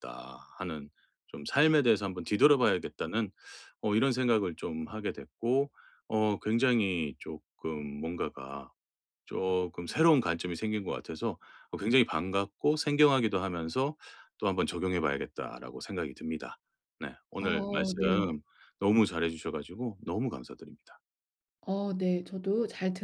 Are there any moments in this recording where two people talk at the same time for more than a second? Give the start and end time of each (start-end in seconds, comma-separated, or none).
none